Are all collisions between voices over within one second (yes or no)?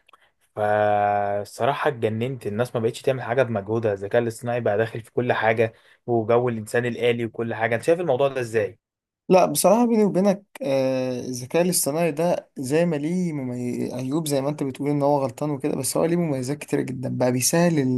yes